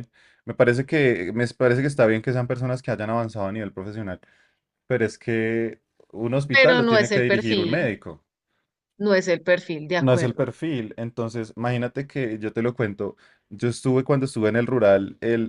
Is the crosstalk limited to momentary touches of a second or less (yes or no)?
no